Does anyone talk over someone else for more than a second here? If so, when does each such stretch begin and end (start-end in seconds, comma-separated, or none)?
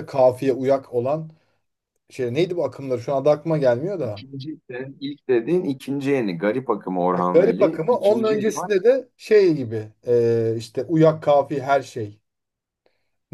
7.1-8.7